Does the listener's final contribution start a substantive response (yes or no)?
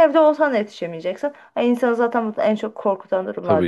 yes